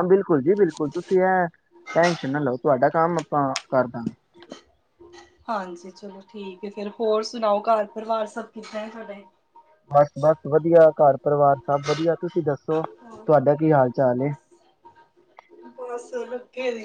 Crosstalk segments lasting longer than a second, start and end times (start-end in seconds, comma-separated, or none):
none